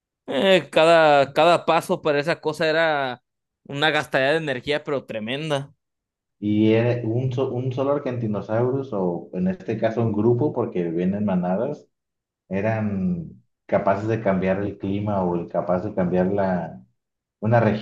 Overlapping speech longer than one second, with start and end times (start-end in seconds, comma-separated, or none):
none